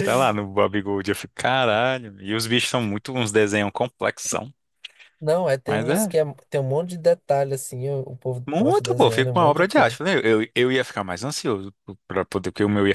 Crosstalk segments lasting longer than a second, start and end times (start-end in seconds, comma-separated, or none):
8.4-10.0